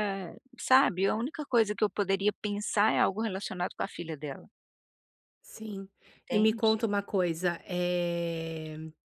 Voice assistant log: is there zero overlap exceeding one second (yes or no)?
yes